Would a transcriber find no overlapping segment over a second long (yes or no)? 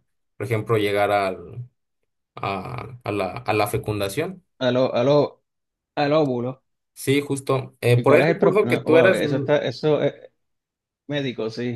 no